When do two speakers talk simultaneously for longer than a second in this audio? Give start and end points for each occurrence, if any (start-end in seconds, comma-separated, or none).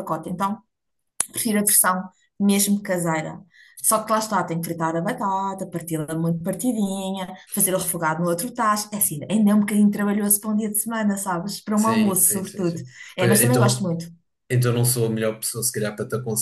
11.8-13.9